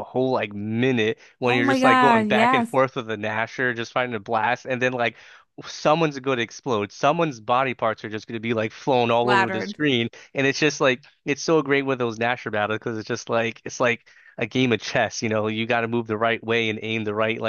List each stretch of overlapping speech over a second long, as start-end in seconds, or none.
1.4-2.8